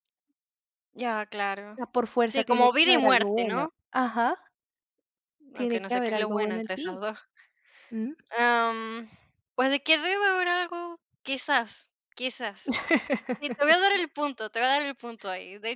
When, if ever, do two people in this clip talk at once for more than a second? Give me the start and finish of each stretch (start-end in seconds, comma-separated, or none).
2.3-3.7, 5.5-7.0